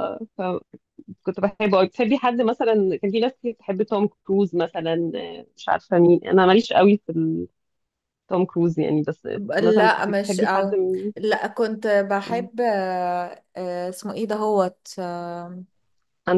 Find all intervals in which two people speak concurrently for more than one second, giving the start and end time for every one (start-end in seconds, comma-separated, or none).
9.3-10.8